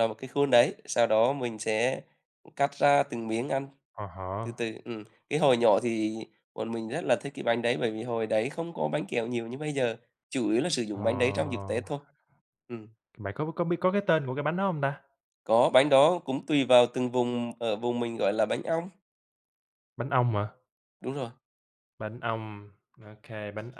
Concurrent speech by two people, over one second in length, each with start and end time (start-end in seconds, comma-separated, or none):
none